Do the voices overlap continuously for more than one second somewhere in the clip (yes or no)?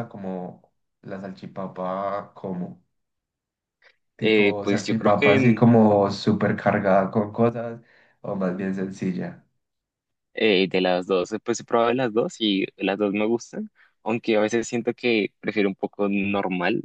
yes